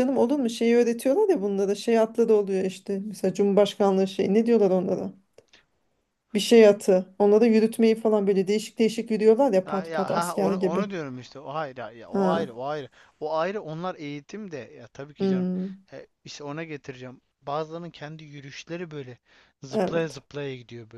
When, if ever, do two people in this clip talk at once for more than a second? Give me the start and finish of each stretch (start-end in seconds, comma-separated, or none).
9.7-10.9